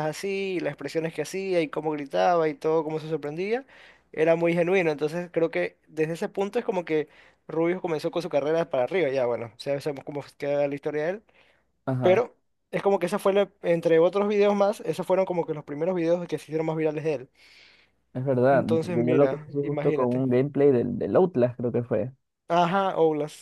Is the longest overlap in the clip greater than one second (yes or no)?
yes